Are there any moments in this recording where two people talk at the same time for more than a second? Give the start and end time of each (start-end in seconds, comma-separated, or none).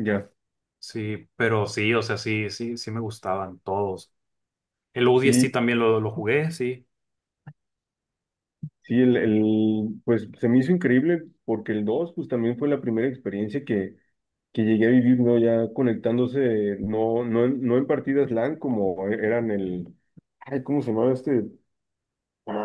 none